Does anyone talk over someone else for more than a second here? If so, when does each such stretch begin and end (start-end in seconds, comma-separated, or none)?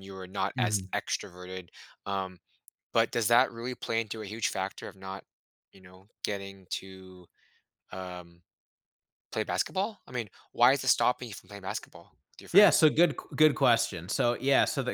none